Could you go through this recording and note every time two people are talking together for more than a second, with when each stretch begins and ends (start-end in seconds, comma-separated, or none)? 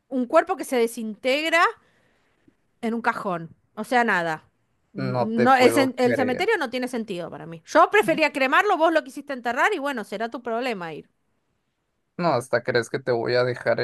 5.0-6.5